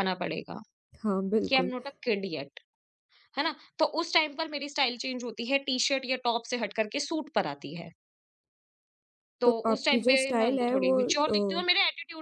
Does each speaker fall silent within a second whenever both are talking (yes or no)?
no